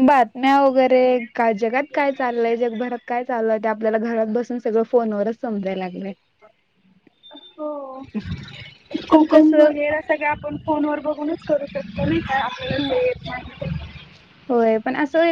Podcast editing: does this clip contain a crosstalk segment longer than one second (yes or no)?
no